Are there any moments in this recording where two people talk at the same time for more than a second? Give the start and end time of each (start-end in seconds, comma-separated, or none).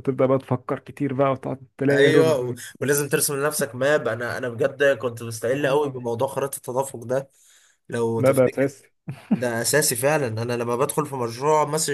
none